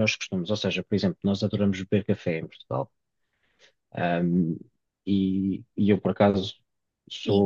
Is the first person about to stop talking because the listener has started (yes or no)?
no